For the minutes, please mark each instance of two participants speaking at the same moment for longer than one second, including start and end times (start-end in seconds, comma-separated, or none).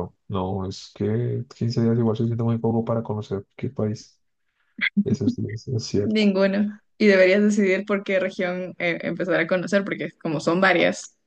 none